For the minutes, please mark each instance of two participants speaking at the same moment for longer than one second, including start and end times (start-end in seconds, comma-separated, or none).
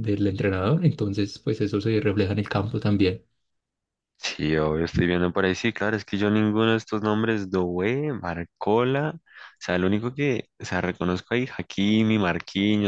none